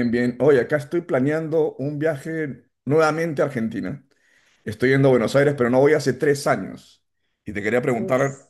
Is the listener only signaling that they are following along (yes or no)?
yes